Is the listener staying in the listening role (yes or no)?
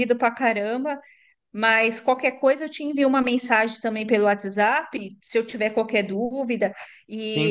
yes